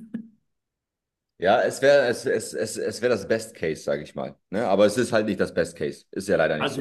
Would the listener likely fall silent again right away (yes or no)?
no